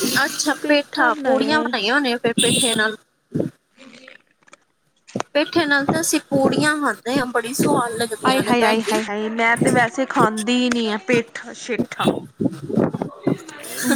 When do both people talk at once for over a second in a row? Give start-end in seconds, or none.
none